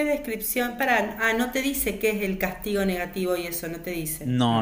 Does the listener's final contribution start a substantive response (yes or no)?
yes